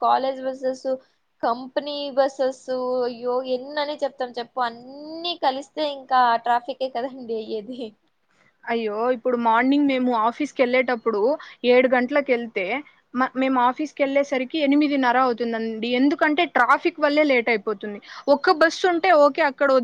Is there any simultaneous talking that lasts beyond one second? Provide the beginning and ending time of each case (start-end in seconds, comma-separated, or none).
none